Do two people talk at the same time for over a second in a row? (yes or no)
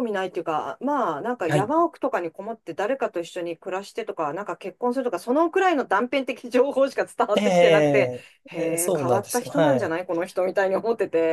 yes